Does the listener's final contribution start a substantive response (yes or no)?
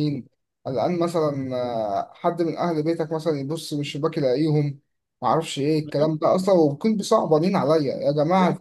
no